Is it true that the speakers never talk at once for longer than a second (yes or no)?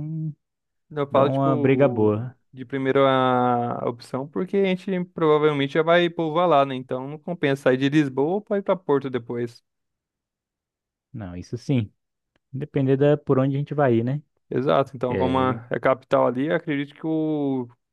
no